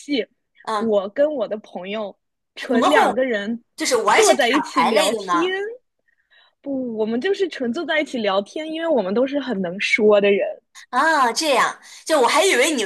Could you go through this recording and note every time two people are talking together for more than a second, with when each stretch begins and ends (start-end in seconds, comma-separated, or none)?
4.1-5.5